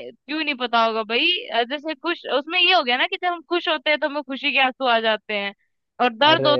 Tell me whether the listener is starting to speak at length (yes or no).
no